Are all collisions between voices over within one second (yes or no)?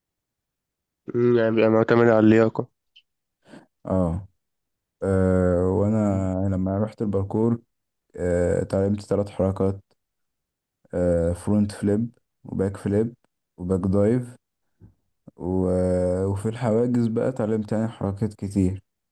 yes